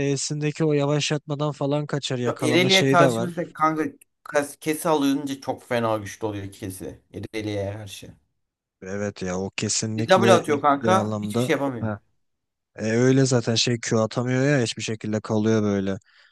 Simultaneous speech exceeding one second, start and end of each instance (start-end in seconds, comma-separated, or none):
2.3-3.5, 10.0-11.9